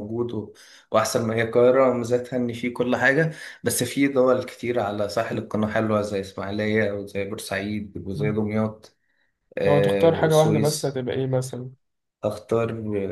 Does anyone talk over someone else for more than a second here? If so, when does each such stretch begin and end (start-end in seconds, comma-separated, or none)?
9.7-10.9